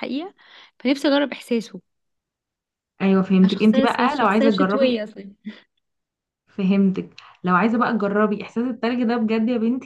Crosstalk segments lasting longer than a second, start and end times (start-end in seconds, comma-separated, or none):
3.4-5.0